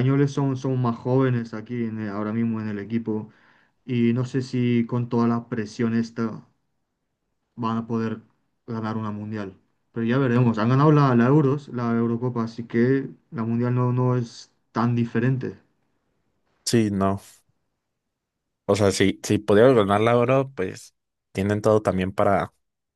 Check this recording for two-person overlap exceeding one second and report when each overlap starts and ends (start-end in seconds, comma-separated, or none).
none